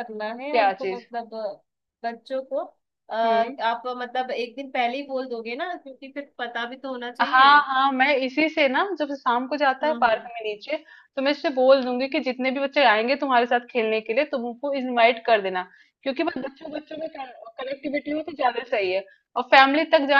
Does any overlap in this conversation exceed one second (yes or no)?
no